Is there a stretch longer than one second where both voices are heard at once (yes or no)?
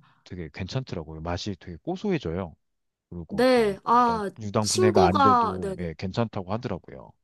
yes